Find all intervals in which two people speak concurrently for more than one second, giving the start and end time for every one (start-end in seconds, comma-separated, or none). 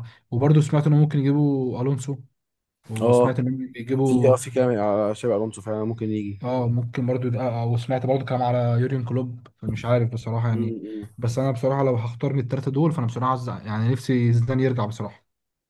none